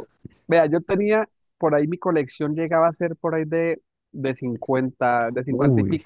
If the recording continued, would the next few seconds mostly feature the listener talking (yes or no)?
no